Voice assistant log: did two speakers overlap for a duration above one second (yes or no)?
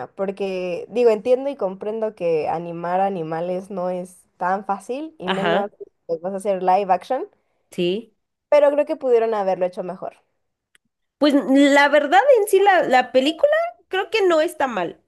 no